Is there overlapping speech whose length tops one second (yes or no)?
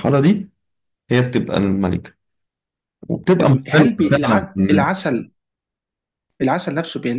yes